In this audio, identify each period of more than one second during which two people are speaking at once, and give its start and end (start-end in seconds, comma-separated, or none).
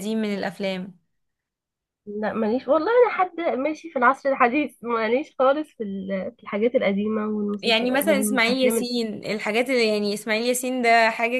7.6-8.9